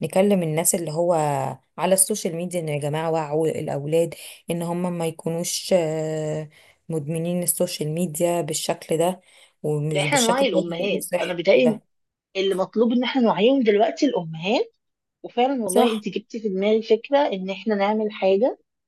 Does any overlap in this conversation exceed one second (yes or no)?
yes